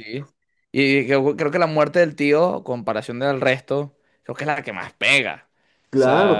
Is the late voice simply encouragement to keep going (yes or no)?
no